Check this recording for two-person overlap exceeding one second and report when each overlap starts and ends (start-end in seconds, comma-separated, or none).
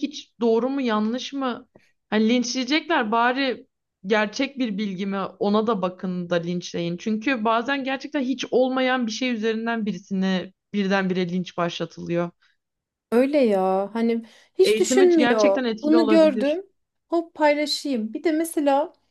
14.6-16.6